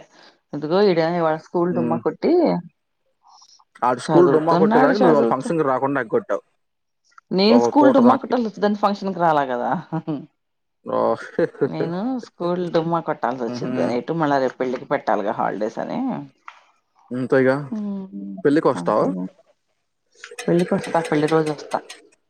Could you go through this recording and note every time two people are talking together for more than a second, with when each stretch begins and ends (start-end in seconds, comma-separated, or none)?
4.1-5.5